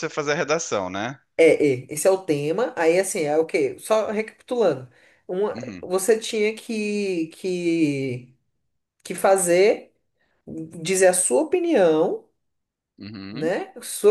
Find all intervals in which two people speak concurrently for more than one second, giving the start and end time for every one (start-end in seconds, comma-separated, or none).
none